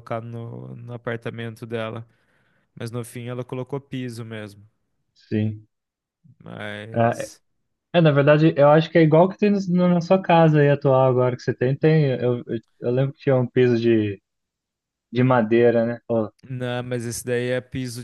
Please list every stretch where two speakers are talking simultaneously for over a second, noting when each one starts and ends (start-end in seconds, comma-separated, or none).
none